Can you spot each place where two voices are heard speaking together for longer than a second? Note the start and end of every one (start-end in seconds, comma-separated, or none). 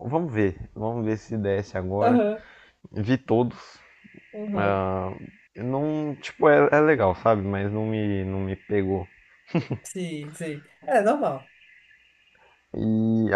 none